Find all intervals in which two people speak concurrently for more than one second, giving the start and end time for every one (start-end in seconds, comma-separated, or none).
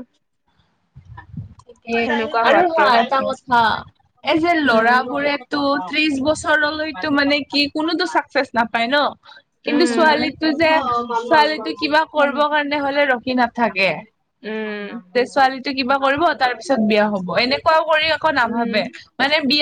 4.7-6.2